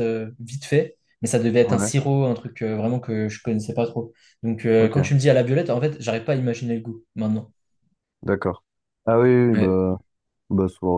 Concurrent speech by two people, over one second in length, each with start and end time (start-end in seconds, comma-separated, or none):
none